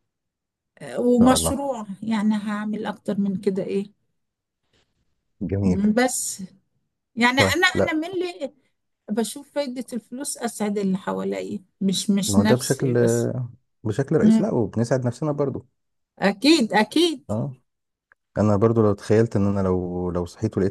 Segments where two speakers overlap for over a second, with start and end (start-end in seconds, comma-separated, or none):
none